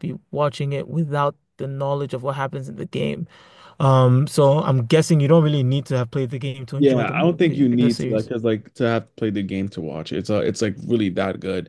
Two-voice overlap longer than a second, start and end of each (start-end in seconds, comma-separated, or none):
6.8-8.3